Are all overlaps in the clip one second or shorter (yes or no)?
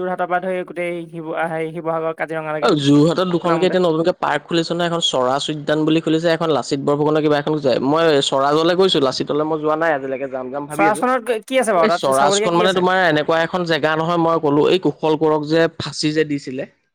no